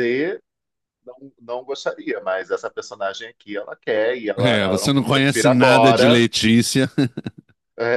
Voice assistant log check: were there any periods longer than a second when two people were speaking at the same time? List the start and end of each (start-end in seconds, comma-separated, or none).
4.4-6.2